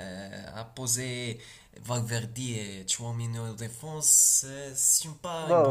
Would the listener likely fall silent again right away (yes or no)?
no